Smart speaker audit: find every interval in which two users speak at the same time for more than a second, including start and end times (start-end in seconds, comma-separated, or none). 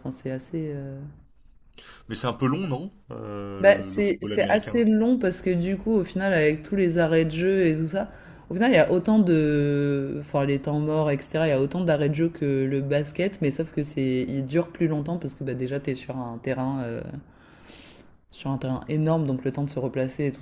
3.6-4.9